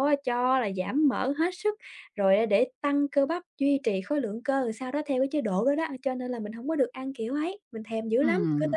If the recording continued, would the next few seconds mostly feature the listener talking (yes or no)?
yes